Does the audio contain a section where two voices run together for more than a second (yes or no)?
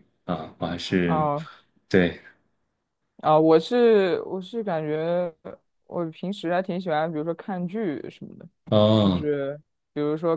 no